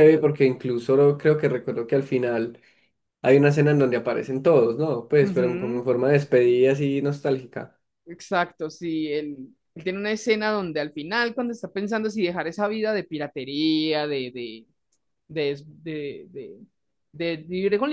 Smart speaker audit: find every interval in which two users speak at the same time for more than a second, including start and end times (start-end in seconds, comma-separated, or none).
none